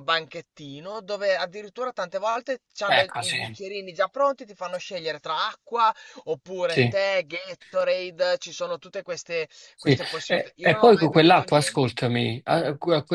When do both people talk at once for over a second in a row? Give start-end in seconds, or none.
9.7-12.0